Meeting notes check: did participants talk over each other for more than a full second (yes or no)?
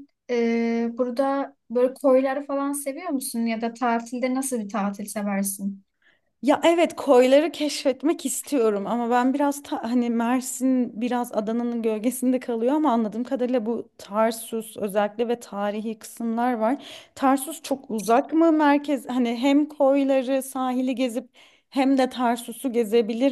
no